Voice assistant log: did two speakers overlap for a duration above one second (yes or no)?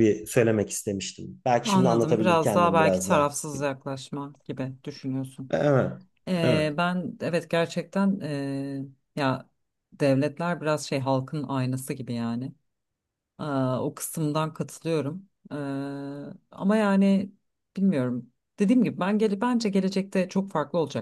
yes